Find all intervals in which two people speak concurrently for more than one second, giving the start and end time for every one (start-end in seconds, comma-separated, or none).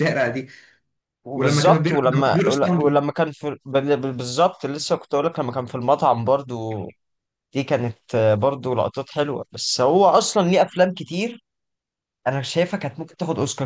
1.3-2.9